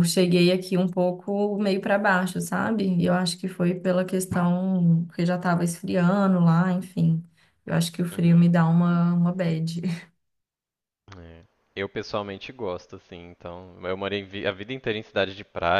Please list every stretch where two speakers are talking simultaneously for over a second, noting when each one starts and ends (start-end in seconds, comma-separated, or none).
none